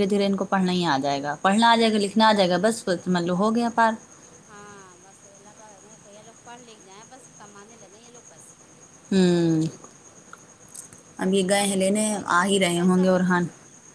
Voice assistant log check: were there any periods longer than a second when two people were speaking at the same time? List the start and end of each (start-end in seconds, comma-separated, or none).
11.6-13.3